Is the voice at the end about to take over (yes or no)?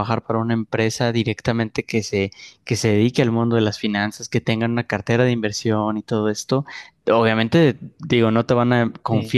no